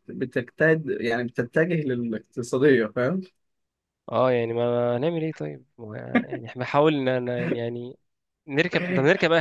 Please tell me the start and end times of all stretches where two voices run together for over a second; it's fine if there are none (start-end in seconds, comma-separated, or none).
none